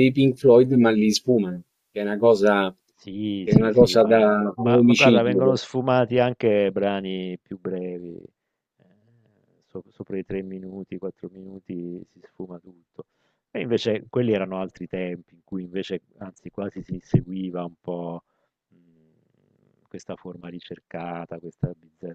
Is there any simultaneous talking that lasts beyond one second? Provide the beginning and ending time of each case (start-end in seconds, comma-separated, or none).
3.4-5.5